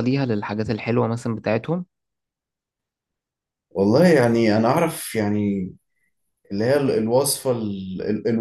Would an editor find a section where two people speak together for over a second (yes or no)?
no